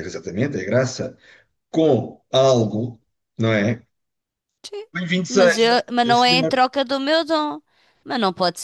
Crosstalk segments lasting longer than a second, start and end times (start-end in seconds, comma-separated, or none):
5.3-6.6